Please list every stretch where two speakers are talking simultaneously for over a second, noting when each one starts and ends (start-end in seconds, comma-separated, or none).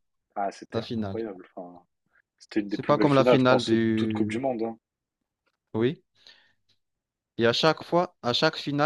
2.7-4.5